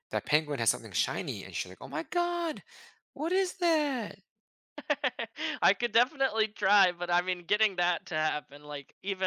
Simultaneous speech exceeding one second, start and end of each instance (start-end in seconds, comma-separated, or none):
none